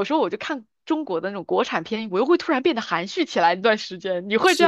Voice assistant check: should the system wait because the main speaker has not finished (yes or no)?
no